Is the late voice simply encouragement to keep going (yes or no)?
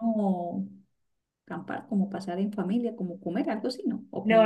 no